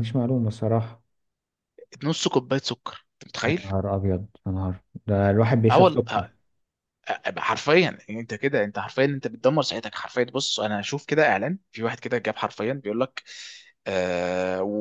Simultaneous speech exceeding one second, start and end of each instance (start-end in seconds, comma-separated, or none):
none